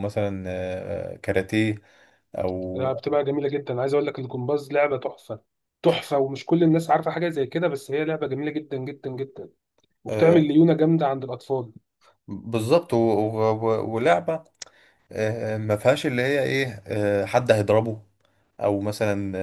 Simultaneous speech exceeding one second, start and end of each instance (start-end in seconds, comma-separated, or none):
none